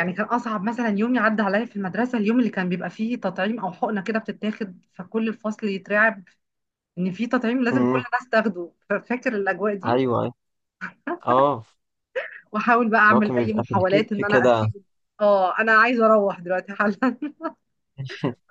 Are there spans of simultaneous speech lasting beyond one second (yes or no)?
yes